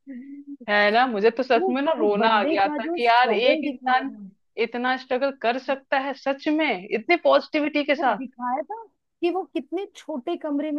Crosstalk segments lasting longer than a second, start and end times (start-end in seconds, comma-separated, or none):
1.6-4.2